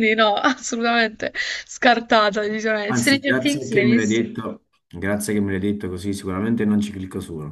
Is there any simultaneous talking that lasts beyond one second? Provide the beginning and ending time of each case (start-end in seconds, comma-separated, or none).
2.9-4.2